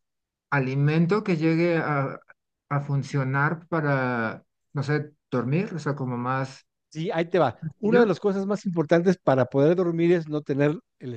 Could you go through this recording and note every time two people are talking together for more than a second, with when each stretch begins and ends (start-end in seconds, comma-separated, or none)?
none